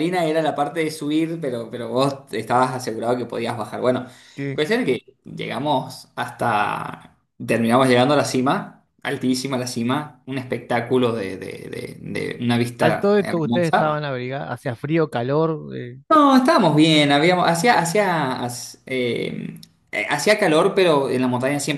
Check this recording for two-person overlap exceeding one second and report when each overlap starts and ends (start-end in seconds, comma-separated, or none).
12.8-14.1